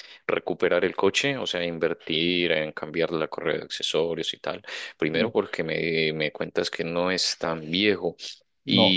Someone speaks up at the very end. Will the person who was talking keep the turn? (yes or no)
yes